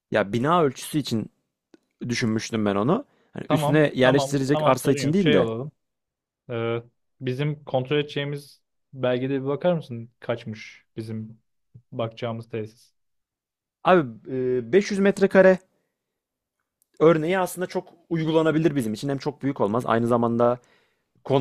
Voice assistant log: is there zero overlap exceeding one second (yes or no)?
no